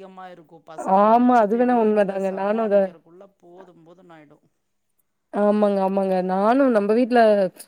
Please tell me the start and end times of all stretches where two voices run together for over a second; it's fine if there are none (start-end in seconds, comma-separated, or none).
1.1-2.8